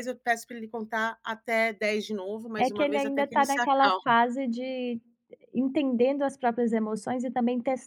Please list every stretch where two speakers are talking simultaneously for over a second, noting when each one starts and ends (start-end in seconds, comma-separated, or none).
2.6-4.1